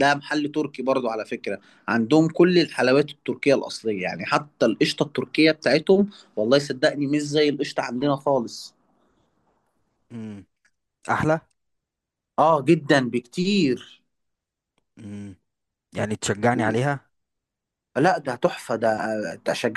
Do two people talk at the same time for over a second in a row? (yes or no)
no